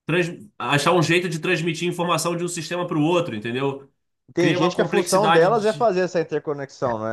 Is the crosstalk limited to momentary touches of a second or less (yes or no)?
no